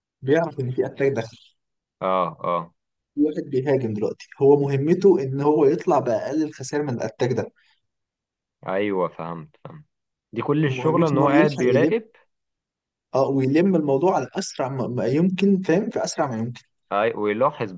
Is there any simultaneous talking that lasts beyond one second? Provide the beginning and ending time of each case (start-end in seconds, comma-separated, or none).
10.7-11.9